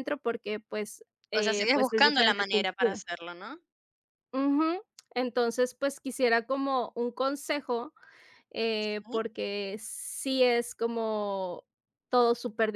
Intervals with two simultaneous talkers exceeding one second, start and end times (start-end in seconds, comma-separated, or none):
1.3-3.0